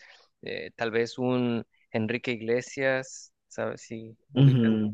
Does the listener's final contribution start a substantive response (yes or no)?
yes